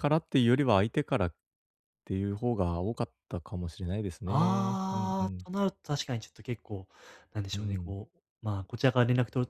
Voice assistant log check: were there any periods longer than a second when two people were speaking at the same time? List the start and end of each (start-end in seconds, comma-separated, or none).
4.2-5.5